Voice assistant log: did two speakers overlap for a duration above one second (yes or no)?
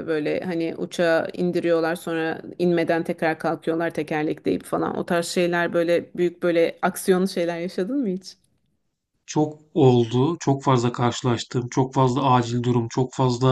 no